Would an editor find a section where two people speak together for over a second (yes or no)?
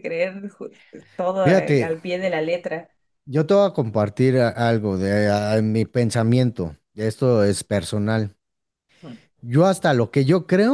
no